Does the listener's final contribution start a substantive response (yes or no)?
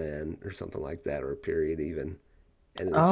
no